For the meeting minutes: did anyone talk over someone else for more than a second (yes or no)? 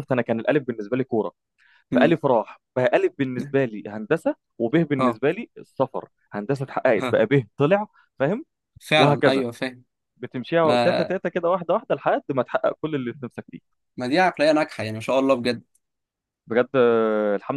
no